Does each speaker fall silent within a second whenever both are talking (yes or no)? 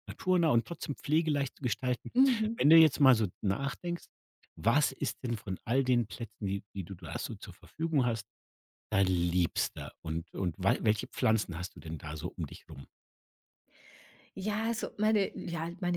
yes